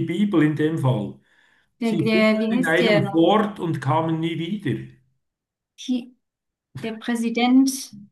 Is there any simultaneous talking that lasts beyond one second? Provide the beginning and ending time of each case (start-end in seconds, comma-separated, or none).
1.8-3.2